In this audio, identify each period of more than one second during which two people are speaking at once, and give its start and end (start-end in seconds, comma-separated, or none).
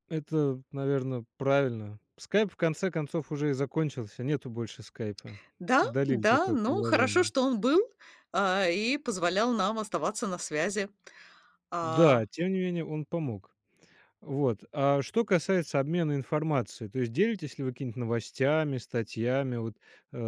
5.8-7.3